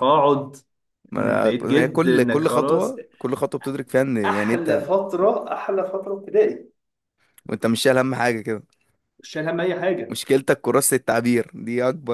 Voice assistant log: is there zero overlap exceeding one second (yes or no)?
no